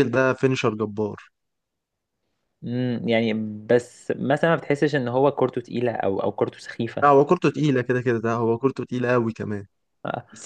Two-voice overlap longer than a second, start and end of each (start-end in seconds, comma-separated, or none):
none